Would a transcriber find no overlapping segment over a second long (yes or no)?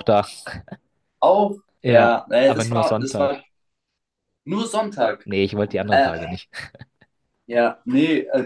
no